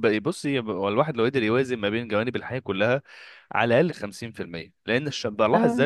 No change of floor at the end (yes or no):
yes